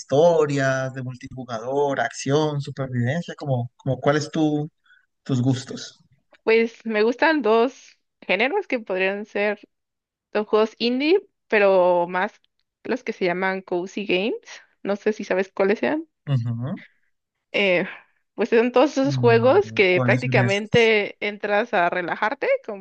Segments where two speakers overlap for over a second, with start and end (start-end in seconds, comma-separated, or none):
19.0-20.9